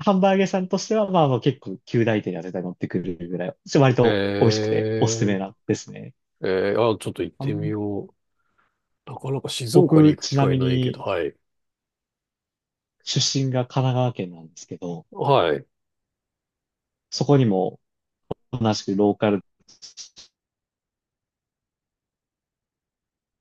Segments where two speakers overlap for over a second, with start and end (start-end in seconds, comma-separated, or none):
9.7-11.0